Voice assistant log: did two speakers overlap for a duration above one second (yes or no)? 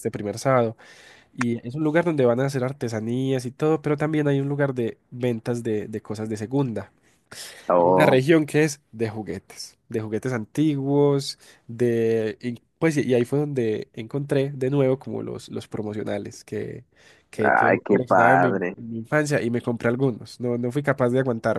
yes